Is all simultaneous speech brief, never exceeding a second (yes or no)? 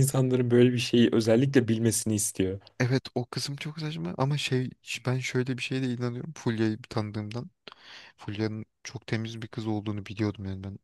yes